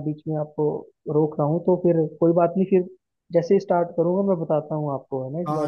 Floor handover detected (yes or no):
yes